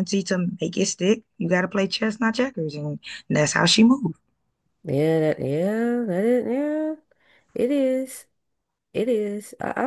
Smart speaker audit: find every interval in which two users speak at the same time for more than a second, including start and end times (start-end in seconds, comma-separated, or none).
none